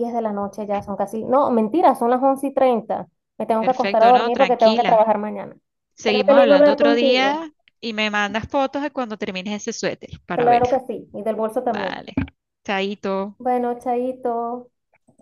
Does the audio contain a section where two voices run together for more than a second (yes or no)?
yes